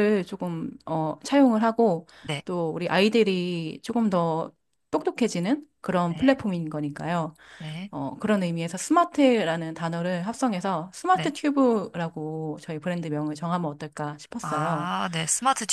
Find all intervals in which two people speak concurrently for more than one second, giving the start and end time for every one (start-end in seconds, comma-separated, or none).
none